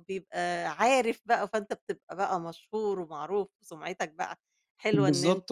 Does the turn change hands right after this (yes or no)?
yes